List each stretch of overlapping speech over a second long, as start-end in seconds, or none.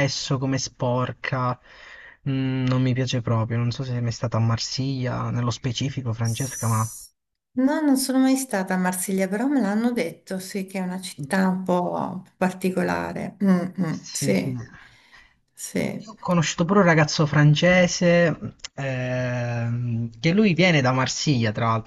none